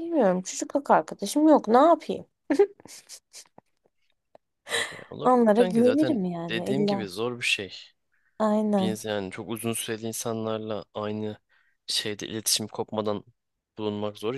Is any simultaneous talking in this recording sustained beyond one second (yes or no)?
yes